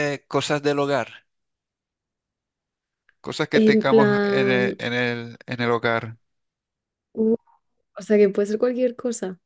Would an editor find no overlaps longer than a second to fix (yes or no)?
no